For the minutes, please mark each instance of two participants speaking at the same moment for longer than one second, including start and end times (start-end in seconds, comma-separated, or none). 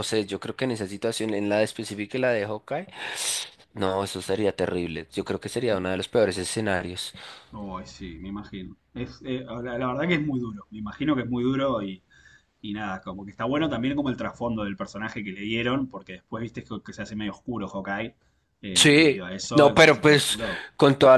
18.7-20.4